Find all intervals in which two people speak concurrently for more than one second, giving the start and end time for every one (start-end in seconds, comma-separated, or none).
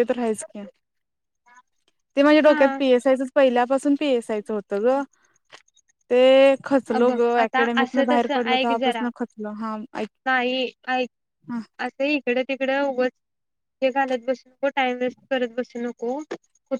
6.9-9.0